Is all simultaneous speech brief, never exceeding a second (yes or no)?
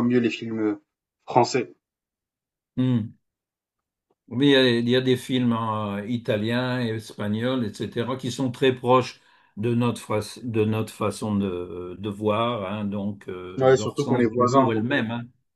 no